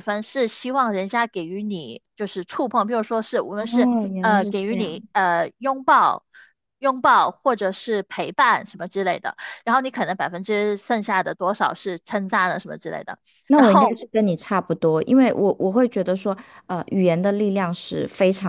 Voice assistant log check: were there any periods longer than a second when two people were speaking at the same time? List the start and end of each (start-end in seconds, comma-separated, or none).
3.6-5.0